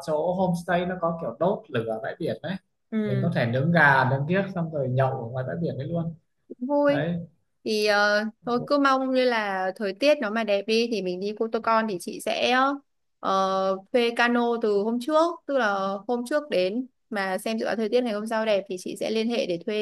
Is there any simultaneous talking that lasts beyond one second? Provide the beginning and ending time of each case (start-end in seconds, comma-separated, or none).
none